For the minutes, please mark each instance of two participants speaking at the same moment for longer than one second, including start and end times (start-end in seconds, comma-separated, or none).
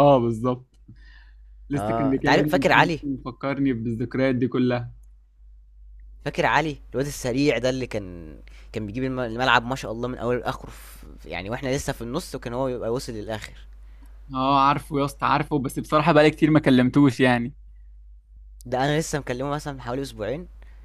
1.8-3.0